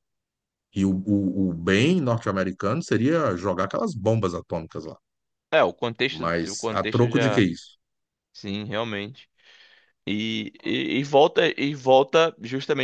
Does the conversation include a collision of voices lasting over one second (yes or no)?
yes